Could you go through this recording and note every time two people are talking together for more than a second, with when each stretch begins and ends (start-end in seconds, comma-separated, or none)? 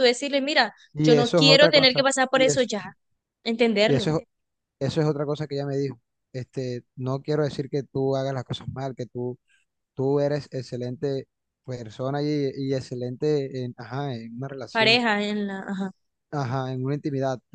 0.9-2.7